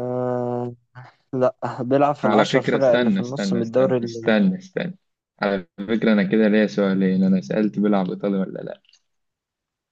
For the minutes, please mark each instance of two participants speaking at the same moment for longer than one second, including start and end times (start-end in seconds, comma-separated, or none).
2.2-4.4